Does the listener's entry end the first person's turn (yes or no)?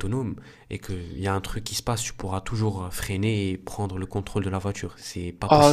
yes